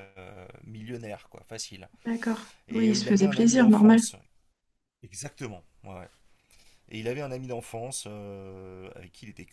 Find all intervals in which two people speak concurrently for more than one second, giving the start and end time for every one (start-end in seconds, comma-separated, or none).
2.7-4.0